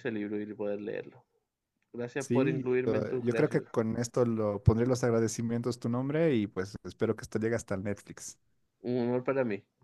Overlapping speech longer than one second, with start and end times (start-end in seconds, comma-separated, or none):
2.2-3.7